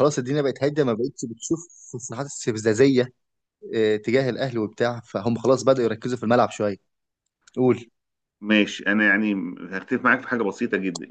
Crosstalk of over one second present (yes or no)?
no